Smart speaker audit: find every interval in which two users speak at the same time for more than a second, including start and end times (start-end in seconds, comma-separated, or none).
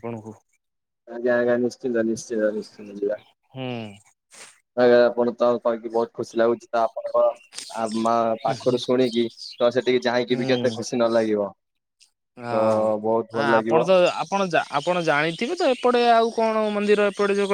none